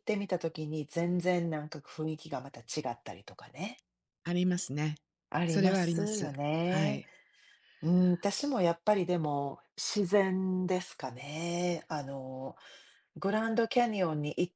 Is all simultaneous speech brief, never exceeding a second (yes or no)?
no